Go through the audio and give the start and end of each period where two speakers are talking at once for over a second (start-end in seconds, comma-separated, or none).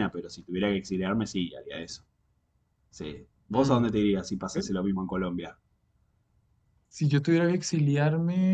none